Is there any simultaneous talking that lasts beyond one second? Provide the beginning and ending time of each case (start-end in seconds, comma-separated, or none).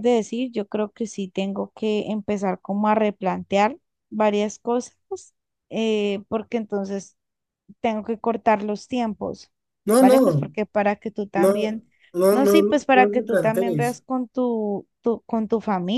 12.3-14.0